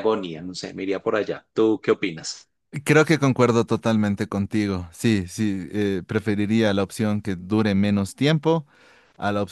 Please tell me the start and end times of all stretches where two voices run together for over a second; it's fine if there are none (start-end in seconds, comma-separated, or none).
none